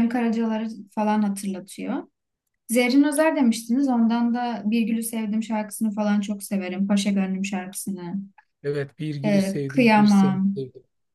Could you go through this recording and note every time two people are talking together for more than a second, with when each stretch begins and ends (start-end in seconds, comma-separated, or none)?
9.2-10.6